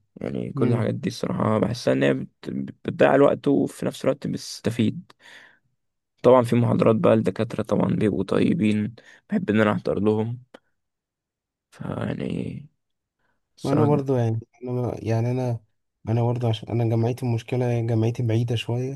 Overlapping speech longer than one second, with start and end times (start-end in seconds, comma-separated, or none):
none